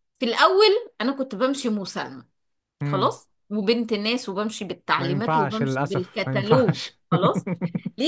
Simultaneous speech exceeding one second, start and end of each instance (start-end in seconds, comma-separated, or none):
5.0-7.0